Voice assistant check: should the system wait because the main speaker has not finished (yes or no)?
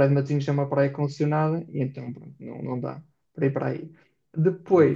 yes